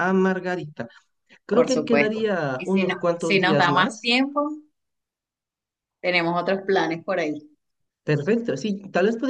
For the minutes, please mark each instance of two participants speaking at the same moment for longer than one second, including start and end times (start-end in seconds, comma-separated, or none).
1.5-4.1